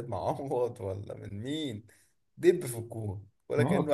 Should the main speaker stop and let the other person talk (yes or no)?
no